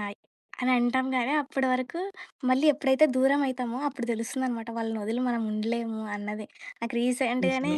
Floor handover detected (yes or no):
no